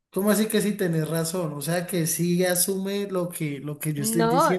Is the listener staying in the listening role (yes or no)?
no